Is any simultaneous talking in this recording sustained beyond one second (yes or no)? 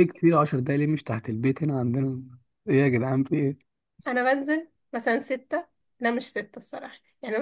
no